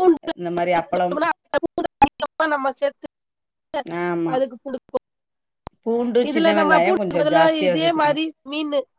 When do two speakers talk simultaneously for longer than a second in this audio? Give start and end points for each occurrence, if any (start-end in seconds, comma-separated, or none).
6.3-8.2